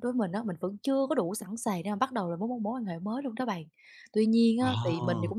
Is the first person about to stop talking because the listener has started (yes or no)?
no